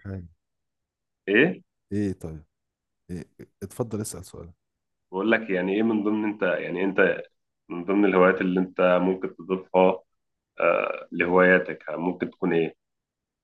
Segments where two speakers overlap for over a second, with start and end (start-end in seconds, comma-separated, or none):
none